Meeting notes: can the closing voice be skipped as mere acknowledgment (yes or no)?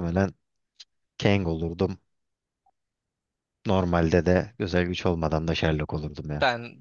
no